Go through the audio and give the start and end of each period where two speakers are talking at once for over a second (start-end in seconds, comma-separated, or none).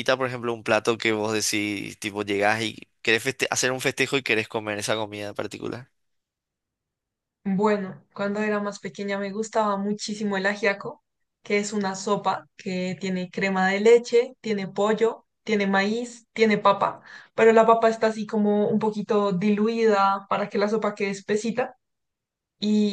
none